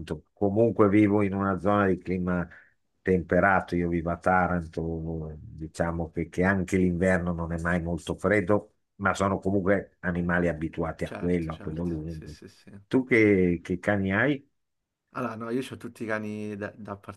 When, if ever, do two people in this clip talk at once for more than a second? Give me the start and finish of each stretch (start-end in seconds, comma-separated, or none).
11.0-12.3